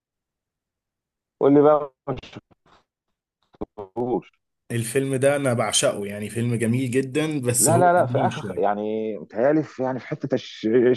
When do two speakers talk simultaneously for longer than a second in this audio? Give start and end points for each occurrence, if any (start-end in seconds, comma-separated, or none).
7.6-8.8